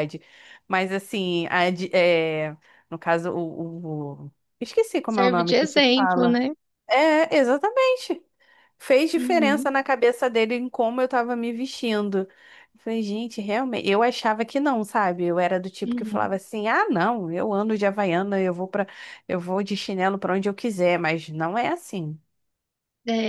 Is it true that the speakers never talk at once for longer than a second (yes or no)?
no